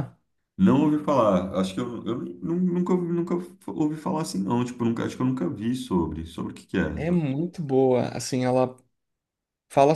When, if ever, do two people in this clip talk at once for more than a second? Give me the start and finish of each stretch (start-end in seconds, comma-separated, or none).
none